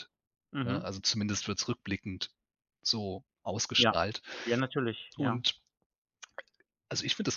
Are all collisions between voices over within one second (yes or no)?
yes